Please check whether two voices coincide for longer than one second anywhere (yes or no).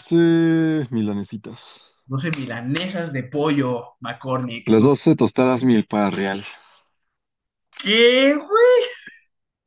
no